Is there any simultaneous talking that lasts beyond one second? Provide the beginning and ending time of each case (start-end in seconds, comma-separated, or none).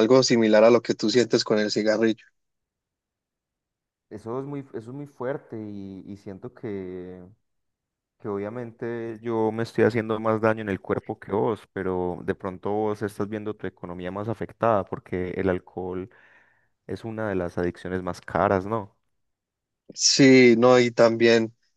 none